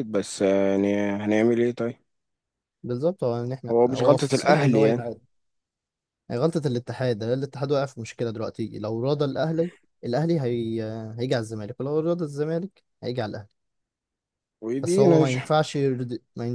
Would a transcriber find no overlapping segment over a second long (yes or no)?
no